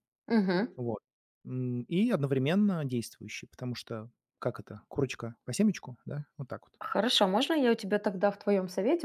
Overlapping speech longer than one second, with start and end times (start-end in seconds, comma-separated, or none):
none